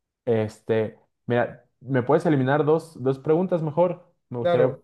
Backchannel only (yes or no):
no